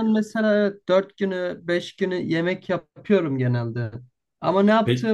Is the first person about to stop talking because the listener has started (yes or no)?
no